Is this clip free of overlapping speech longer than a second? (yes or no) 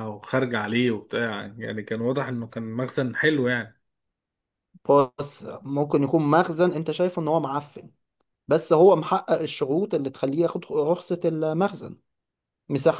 yes